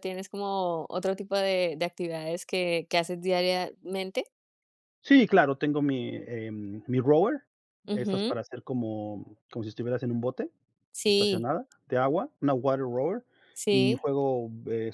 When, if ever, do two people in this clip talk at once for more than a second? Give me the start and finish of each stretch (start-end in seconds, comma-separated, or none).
none